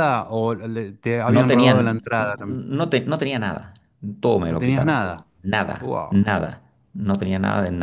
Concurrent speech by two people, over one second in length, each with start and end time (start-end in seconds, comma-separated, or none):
1.3-2.7